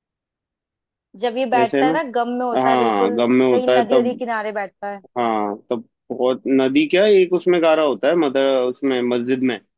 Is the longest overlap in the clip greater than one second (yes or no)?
yes